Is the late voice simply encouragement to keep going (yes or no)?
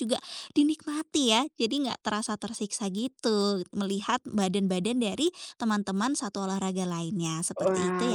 no